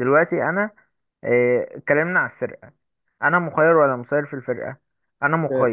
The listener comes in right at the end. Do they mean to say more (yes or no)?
yes